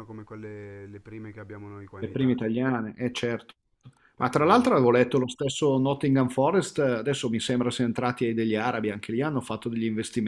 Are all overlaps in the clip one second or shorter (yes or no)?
yes